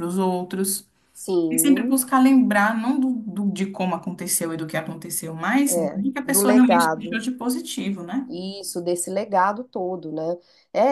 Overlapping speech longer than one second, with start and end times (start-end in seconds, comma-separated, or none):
5.7-7.2